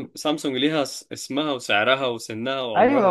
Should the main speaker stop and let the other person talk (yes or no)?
yes